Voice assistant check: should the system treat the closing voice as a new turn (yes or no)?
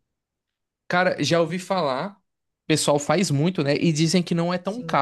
yes